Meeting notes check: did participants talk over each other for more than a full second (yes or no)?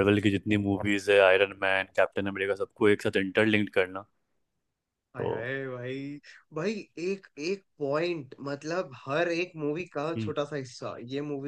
no